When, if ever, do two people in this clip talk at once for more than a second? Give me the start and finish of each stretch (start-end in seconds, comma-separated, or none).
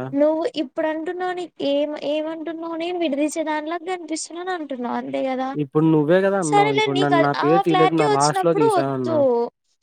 6.5-9.2